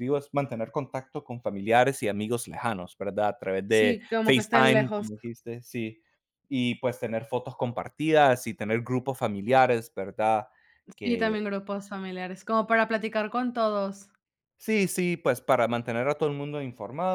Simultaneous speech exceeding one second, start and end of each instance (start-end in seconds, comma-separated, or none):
3.7-5.1